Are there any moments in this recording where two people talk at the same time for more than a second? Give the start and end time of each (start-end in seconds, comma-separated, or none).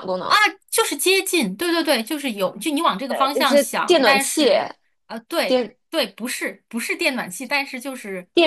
3.1-4.5